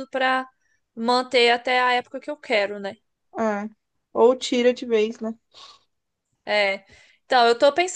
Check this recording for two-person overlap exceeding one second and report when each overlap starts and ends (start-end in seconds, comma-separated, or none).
none